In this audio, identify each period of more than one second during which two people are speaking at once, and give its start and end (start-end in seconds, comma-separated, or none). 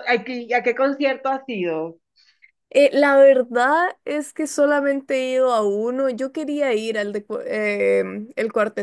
none